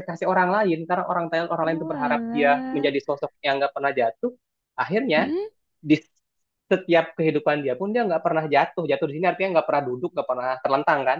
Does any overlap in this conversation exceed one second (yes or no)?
yes